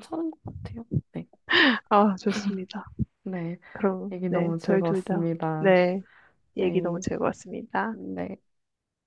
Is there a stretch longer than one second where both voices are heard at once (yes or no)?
yes